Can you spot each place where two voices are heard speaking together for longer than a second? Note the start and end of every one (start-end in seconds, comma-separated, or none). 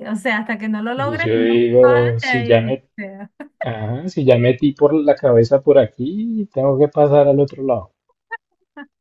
0.9-2.9